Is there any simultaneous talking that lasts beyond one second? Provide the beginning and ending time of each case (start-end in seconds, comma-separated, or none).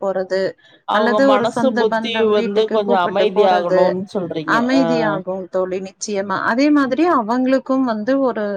1.0-3.8